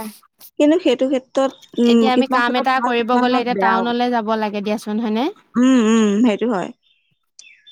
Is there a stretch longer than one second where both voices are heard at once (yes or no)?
yes